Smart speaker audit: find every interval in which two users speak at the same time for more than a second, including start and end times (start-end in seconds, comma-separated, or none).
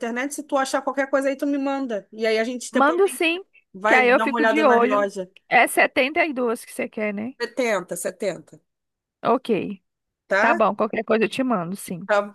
3.9-5.1